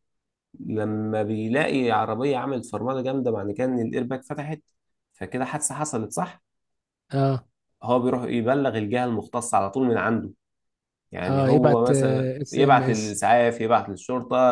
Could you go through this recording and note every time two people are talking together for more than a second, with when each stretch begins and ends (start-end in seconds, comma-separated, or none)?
11.3-13.2